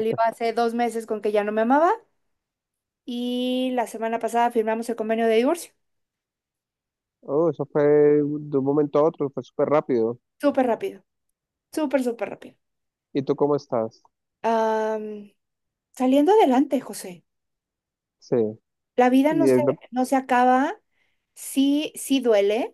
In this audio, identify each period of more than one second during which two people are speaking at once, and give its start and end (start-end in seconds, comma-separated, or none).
none